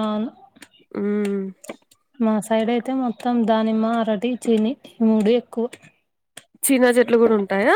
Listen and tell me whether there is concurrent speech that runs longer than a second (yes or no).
no